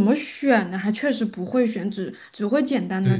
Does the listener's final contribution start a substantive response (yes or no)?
yes